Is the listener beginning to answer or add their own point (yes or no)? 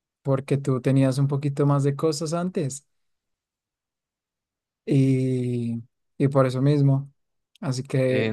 yes